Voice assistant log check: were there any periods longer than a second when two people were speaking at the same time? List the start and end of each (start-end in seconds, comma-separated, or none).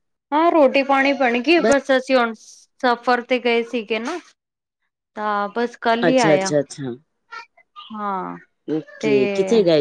none